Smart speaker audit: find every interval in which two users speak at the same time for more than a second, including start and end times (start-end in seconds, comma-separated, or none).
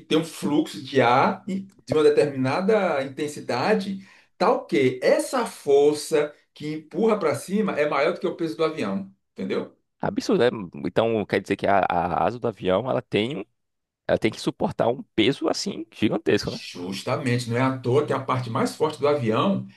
none